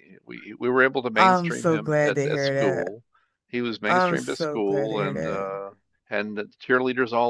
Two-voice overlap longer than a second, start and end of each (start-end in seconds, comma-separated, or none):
1.1-2.9, 3.9-5.5